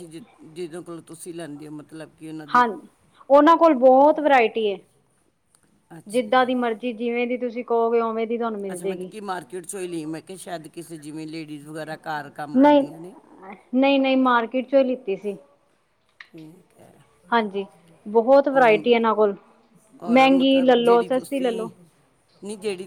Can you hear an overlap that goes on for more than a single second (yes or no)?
yes